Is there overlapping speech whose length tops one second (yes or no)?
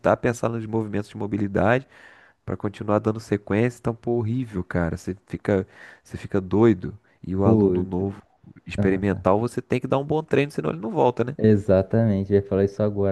no